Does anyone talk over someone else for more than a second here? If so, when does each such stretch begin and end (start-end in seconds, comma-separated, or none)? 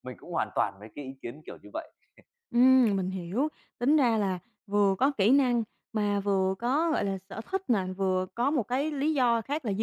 none